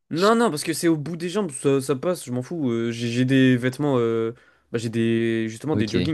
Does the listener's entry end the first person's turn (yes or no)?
no